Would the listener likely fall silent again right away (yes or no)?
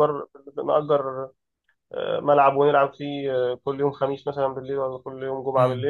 no